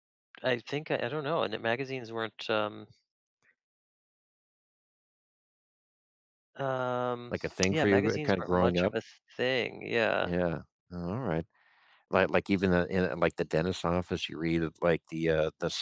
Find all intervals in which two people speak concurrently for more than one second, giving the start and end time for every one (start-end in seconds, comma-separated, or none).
7.7-8.9